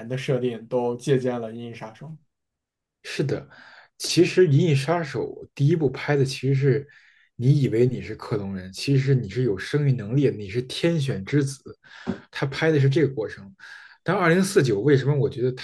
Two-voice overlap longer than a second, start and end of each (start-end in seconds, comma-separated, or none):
none